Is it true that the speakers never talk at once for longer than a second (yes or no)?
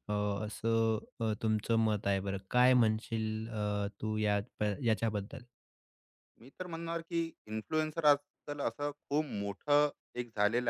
yes